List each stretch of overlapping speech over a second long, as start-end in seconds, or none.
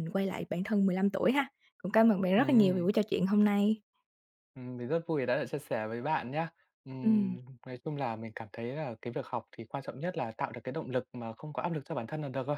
none